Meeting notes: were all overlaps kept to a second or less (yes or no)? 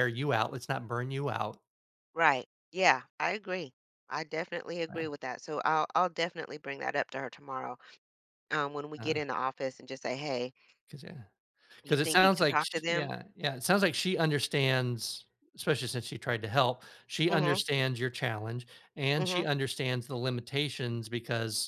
no